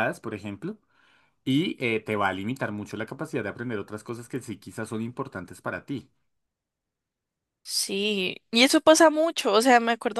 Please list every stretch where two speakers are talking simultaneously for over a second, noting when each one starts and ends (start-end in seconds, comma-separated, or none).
none